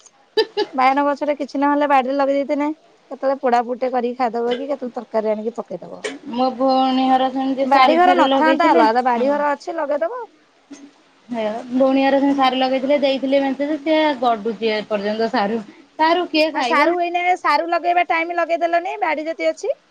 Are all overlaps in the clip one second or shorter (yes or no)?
yes